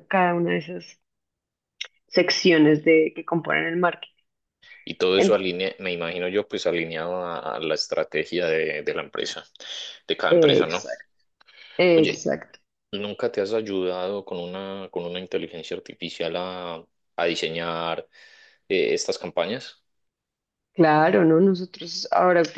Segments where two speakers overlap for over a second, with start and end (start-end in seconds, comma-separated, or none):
none